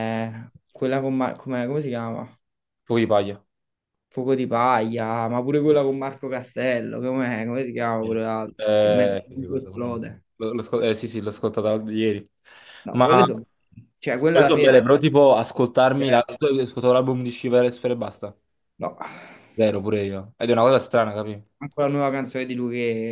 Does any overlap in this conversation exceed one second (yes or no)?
yes